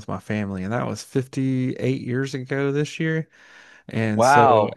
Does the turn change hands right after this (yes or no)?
no